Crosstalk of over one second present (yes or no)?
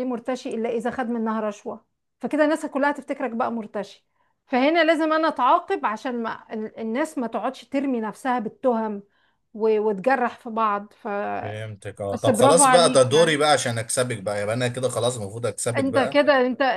yes